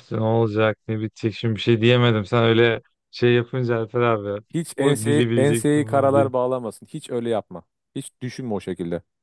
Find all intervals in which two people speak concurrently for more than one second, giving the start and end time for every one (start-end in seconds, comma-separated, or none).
4.5-6.3